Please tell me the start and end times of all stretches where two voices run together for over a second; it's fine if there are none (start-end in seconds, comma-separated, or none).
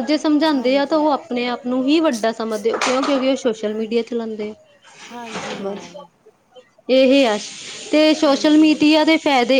none